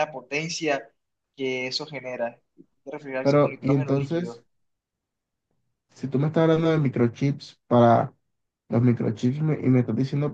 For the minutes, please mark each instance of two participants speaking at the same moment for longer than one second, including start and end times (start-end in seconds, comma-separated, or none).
3.2-4.4